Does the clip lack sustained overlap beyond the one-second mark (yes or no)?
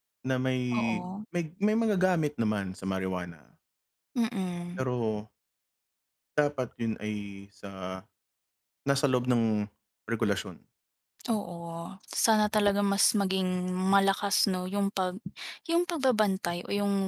yes